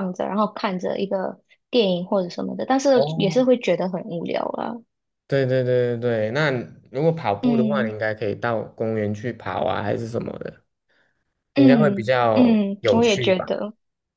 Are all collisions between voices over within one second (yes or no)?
no